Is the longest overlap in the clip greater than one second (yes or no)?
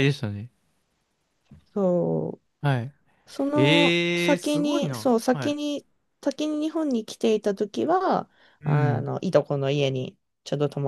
yes